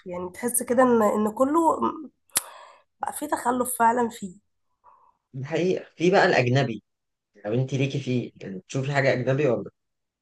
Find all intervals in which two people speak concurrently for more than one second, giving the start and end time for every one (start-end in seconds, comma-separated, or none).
none